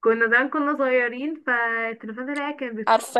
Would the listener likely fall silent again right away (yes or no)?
yes